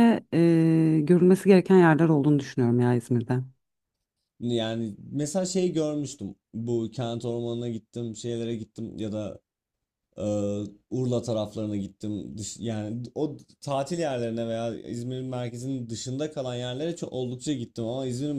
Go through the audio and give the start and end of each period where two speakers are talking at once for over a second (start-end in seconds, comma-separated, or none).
none